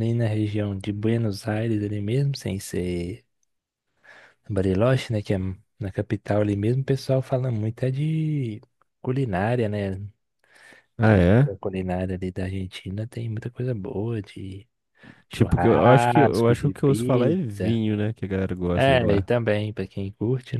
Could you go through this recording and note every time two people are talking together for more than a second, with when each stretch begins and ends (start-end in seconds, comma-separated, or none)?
15.3-17.8